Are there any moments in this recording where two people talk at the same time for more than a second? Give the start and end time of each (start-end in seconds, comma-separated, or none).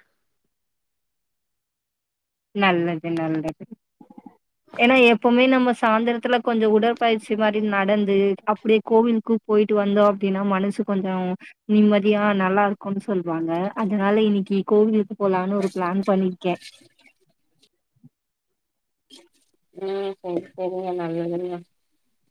none